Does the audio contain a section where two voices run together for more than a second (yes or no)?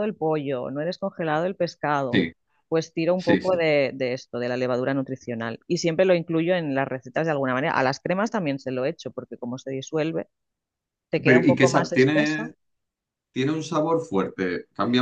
yes